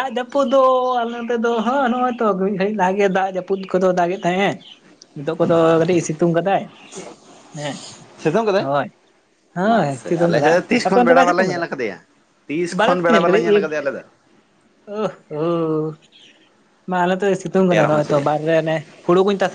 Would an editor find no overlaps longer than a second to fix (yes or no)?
no